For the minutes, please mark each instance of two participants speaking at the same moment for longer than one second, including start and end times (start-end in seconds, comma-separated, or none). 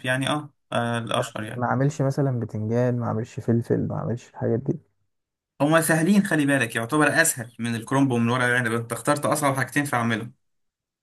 none